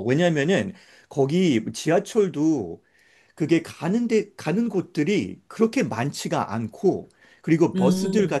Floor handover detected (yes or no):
no